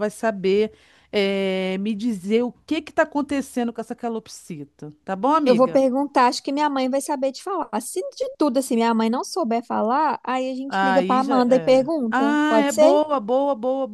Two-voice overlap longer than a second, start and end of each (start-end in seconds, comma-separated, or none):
10.7-12.9